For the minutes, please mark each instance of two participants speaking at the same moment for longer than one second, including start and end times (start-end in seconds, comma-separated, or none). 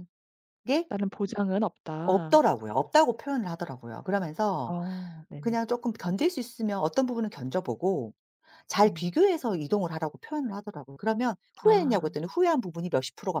none